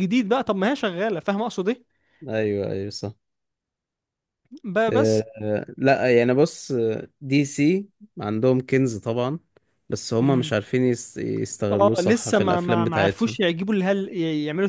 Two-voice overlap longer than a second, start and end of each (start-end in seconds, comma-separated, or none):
11.7-13.4